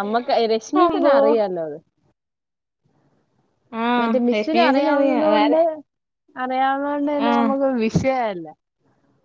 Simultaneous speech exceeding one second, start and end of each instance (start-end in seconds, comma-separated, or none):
4.0-5.5